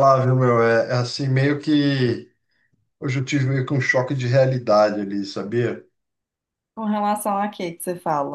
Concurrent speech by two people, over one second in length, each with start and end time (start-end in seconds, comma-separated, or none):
none